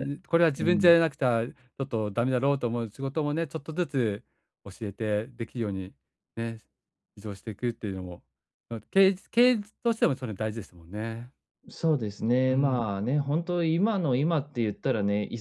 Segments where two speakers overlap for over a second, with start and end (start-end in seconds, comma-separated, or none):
none